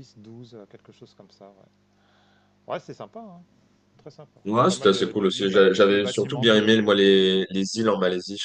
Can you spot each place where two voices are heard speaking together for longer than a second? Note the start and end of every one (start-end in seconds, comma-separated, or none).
4.5-7.2